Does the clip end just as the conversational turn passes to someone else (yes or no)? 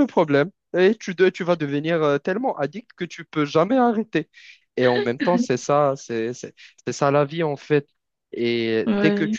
no